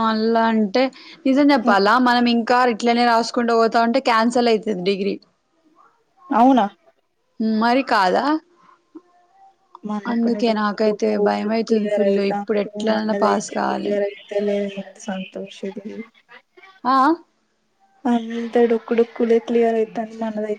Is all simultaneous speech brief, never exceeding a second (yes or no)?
no